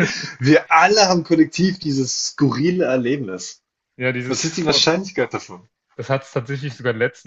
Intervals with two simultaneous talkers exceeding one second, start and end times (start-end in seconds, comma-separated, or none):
none